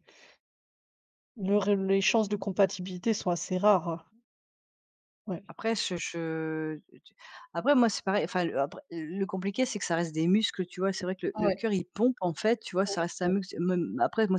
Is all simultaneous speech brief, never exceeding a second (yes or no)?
yes